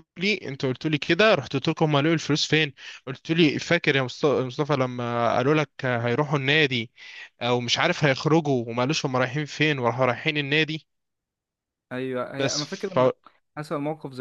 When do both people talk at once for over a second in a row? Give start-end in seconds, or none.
none